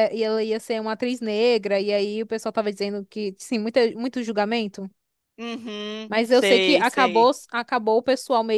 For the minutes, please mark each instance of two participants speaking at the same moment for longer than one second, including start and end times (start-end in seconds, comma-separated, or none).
6.1-7.3